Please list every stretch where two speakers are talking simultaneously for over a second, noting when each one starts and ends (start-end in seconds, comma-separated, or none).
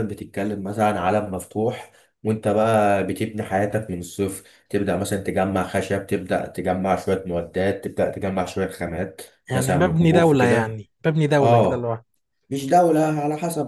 9.5-10.8